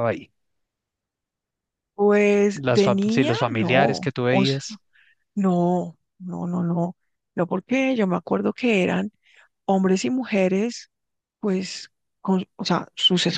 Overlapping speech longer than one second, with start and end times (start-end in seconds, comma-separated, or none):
2.5-4.6